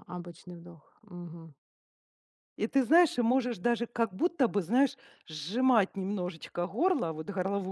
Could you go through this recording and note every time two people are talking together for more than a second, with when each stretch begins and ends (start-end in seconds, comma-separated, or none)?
none